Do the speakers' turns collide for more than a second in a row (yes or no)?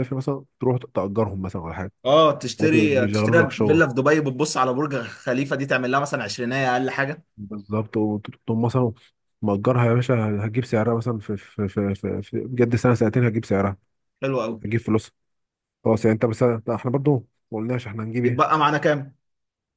yes